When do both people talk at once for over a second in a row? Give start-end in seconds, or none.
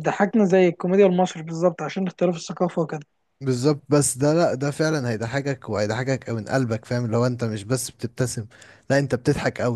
none